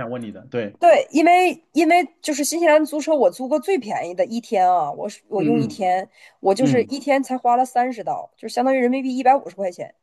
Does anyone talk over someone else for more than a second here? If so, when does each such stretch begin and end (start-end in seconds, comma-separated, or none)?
none